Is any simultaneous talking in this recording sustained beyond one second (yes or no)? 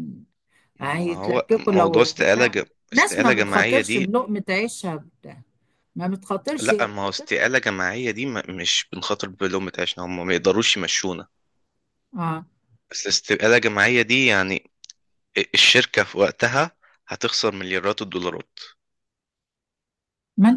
yes